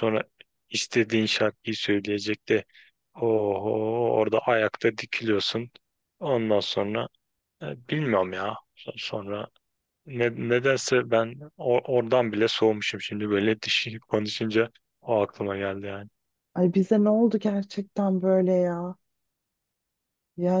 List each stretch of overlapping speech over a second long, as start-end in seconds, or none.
none